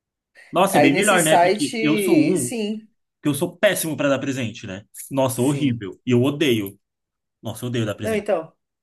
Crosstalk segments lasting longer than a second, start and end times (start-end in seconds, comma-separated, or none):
0.7-2.5